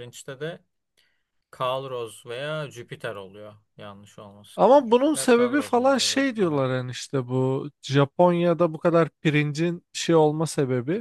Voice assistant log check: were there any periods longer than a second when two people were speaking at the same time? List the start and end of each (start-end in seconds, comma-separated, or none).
4.5-6.7